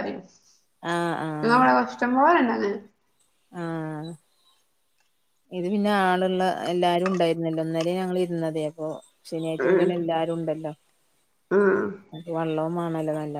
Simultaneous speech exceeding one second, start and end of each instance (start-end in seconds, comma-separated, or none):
none